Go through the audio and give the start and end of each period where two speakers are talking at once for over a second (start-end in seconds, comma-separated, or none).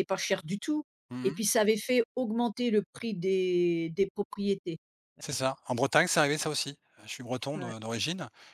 none